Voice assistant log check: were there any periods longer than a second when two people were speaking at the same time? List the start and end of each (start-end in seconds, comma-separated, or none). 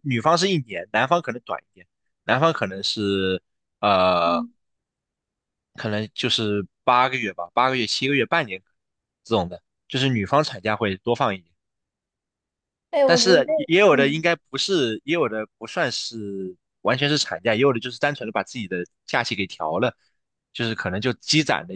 13.1-14.3